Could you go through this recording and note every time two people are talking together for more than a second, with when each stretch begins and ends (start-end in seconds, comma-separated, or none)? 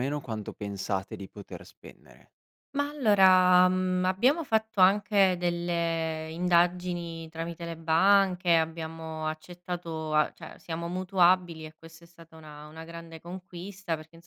none